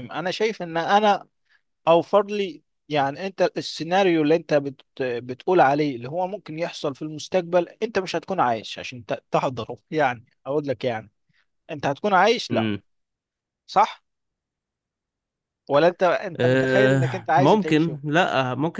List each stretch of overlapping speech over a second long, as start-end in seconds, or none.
16.4-18.0